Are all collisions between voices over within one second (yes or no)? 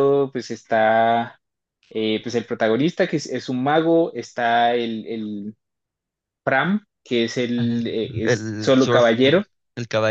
no